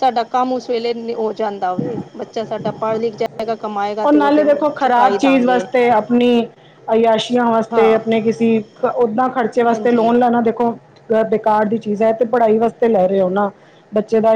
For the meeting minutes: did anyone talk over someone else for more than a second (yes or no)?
yes